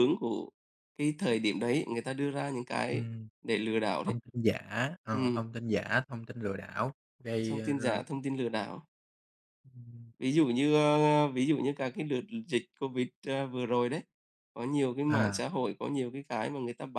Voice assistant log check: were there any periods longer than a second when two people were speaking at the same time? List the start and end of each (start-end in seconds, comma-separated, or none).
none